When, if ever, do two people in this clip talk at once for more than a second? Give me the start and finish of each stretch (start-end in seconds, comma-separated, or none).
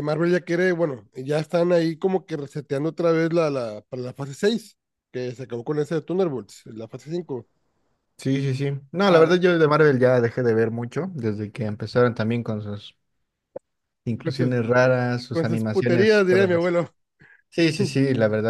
15.3-16.8